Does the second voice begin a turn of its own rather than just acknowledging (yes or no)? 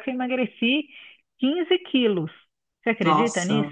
yes